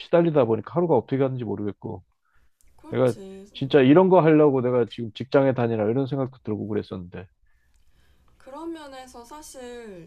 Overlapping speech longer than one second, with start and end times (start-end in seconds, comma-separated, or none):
none